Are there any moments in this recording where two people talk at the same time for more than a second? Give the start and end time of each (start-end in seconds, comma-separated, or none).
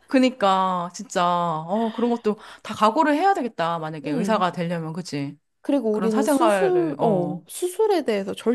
5.9-7.4